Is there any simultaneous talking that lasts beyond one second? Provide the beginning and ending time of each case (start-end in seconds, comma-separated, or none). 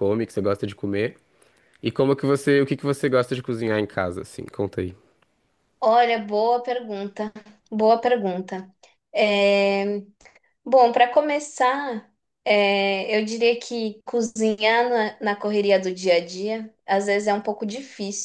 none